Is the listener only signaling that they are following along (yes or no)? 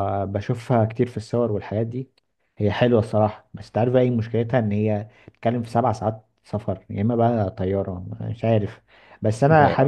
yes